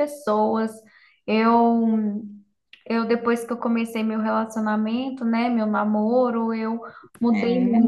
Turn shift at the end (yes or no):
no